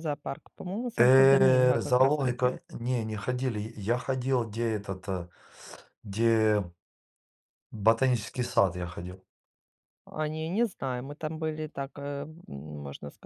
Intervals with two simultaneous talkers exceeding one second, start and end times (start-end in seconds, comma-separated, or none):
1.0-2.6